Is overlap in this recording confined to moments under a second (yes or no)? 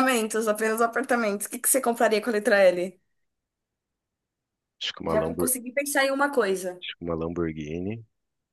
yes